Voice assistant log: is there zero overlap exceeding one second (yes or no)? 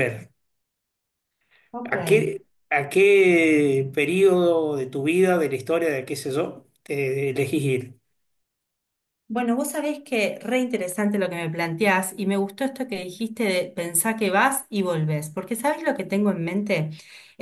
yes